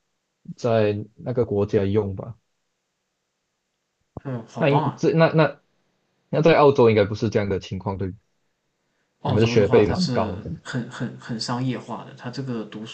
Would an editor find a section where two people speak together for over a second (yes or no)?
yes